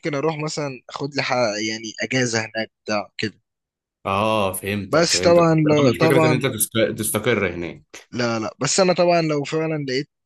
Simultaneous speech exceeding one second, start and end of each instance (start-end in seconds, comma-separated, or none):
4.9-6.4